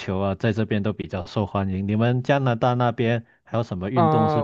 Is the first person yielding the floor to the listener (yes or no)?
yes